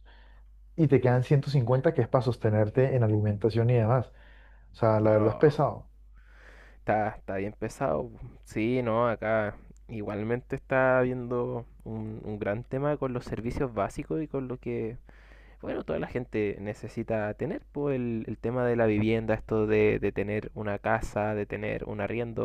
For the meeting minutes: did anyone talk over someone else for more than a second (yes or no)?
no